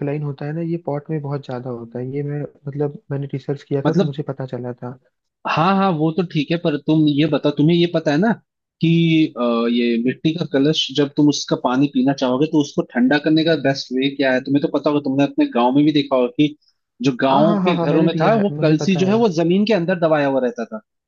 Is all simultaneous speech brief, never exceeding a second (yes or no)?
no